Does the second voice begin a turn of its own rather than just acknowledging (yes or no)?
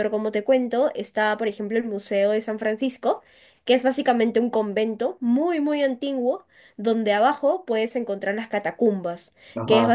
no